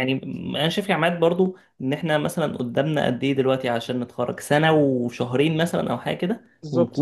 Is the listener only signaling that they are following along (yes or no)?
yes